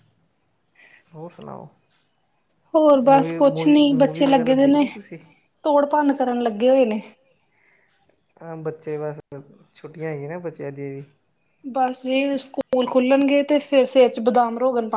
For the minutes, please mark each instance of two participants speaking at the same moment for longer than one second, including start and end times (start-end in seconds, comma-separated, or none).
3.0-4.9